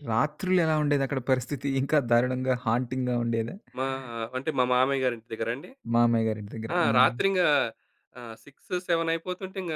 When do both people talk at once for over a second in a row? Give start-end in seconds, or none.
none